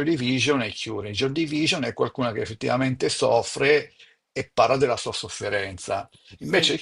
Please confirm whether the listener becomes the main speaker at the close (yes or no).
no